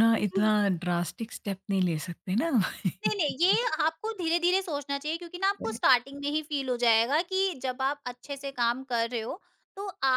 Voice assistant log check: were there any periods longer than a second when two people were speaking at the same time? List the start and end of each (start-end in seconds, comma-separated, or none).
none